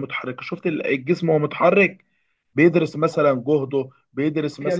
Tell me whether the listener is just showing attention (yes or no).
yes